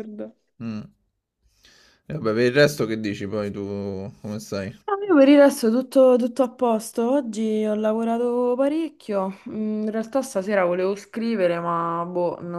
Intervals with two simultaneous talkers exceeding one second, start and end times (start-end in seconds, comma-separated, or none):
none